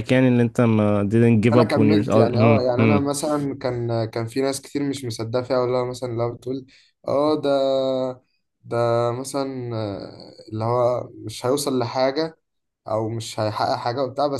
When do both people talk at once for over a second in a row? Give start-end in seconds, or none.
1.5-3.1